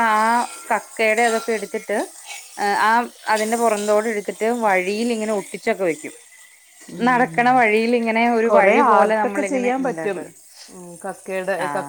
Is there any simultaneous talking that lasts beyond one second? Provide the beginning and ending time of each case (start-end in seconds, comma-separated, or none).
8.5-10.2